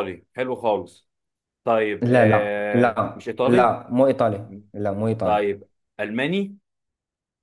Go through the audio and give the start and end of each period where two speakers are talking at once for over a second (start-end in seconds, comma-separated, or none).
2.0-3.8